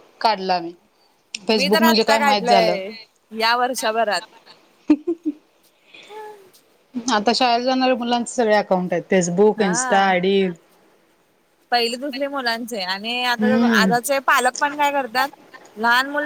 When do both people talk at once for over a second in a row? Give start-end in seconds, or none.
1.6-2.8